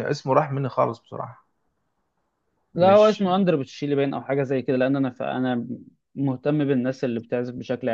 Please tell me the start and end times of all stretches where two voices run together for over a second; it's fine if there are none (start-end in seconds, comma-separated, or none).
none